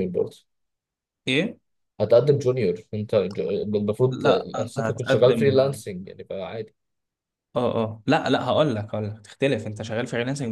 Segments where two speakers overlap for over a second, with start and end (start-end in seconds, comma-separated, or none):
4.1-5.6